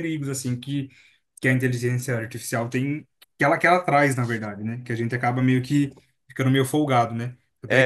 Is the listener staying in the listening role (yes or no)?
yes